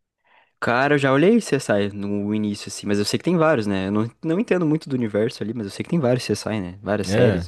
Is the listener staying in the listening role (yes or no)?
no